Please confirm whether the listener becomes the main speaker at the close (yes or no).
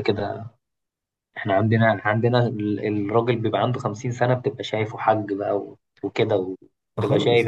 yes